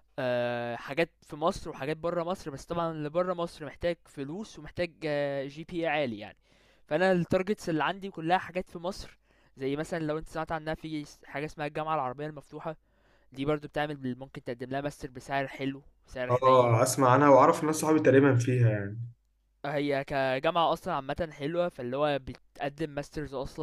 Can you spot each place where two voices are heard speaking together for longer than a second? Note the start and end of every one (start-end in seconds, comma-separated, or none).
none